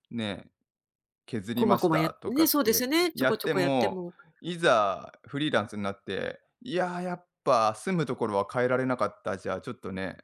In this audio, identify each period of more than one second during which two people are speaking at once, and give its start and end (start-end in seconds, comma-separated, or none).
1.6-4.1